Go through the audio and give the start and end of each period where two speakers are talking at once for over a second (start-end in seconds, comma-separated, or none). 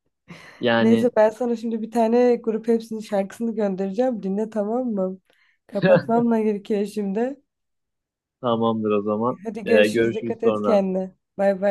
9.4-10.8